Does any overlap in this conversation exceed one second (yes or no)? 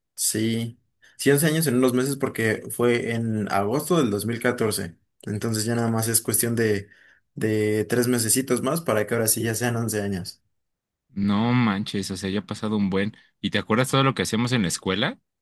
no